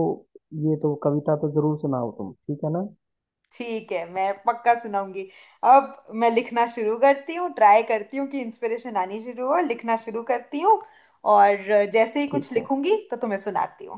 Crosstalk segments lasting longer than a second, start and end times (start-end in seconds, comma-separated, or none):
none